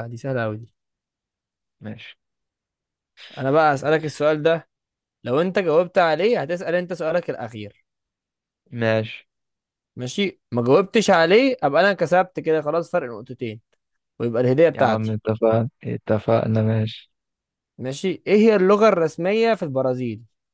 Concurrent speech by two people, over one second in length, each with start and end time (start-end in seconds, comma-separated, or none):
none